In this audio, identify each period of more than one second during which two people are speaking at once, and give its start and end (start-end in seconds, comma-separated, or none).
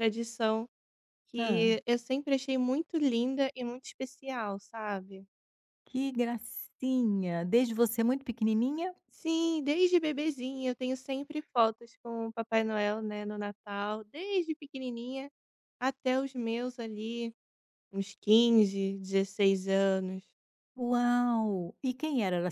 none